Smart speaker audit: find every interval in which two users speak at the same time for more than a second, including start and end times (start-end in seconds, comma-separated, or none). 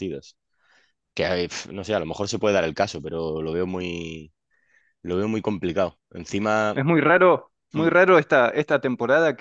none